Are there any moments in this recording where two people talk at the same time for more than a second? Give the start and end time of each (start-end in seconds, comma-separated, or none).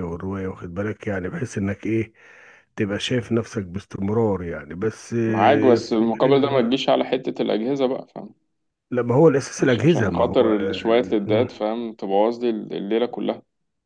5.2-6.5, 9.6-11.5